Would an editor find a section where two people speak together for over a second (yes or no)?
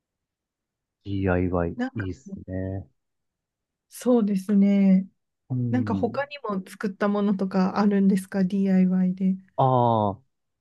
no